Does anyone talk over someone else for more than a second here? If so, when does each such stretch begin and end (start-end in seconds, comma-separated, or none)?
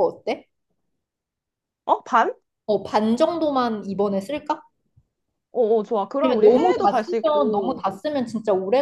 6.2-7.9